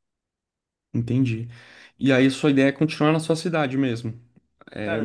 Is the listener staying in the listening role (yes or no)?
no